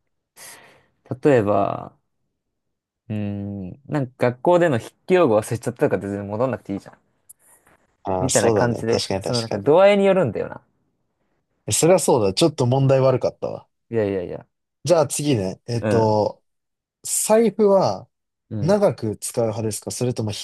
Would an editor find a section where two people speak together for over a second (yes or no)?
yes